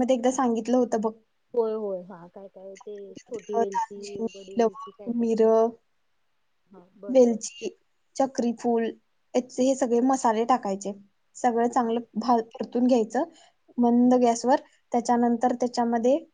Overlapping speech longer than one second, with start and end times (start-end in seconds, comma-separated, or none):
3.6-5.3